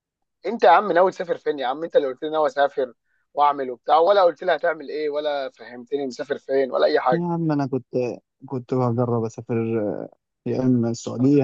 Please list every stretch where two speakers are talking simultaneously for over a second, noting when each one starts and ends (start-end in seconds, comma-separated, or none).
none